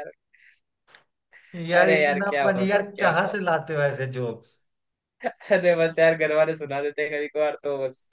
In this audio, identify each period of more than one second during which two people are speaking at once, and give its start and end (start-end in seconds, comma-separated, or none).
1.7-3.4